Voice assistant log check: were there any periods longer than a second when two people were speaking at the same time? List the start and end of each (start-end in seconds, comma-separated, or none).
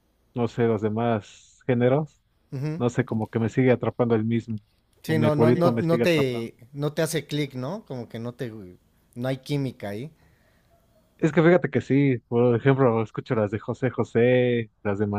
5.0-6.5